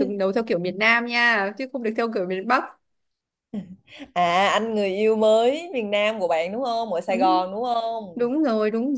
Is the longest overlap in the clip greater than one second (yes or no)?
no